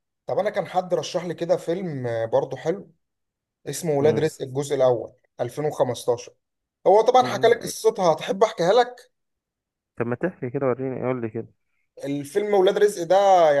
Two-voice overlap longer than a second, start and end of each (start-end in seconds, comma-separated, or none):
none